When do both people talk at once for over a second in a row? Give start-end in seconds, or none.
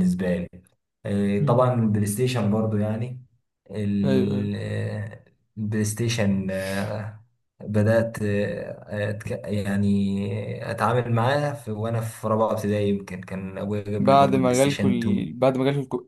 14.0-15.3